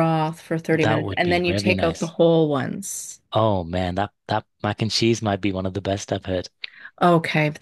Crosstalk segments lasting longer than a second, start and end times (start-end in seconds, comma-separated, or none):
0.8-2.1